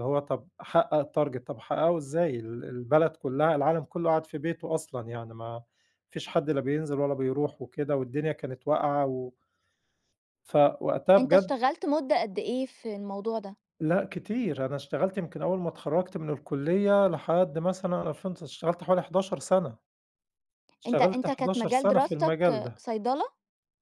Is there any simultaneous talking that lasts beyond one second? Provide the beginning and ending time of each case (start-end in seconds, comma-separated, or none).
20.9-22.8